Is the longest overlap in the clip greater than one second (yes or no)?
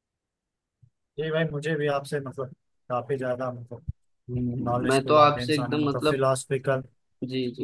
yes